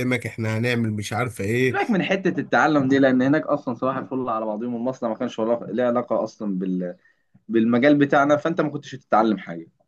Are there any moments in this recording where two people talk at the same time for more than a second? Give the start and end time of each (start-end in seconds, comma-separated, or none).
none